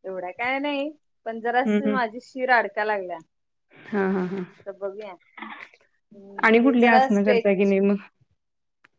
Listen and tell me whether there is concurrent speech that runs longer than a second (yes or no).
yes